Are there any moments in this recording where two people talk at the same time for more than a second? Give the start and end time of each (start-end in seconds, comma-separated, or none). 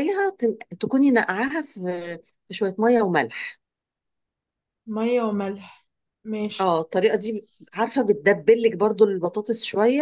none